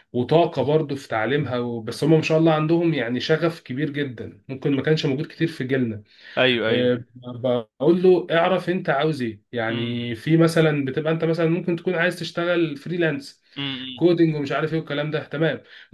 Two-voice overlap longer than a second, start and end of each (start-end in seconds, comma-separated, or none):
none